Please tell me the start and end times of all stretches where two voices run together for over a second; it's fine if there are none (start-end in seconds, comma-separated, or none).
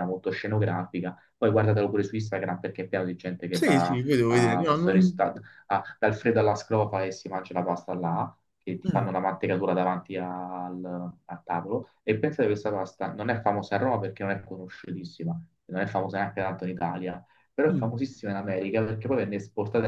3.5-5.3